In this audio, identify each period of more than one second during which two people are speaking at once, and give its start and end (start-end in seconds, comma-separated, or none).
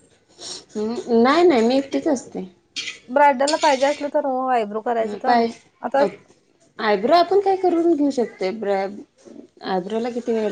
none